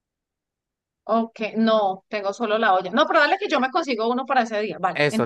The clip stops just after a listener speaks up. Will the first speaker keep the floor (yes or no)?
no